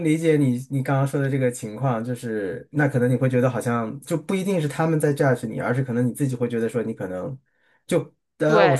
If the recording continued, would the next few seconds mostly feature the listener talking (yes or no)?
no